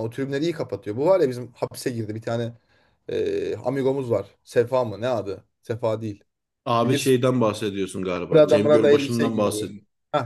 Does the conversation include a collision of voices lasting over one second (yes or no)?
yes